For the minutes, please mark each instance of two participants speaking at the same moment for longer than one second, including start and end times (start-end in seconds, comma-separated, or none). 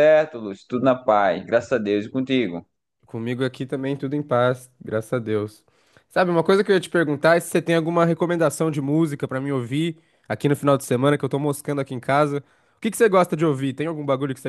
none